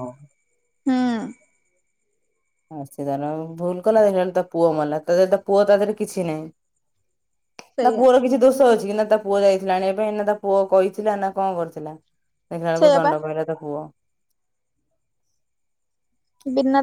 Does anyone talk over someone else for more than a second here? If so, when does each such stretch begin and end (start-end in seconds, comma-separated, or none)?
none